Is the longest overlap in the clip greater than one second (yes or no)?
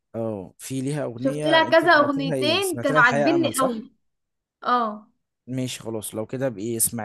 yes